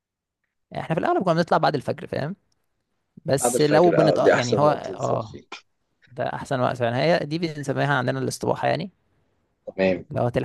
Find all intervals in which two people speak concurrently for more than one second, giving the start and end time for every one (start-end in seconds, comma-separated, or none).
3.4-5.4